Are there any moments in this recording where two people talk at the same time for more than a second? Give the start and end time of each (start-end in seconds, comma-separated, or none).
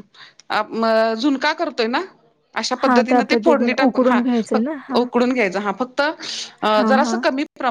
2.8-5.0